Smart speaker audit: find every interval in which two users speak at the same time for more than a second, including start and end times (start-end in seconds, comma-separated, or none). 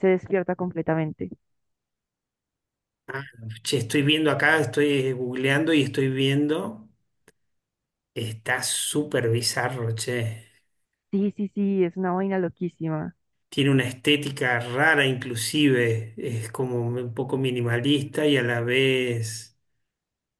none